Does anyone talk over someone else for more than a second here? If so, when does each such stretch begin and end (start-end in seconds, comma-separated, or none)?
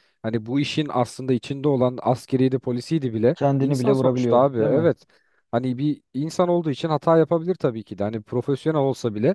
3.3-4.9